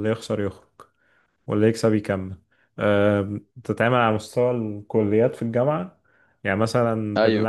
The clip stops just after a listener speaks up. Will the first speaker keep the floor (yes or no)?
yes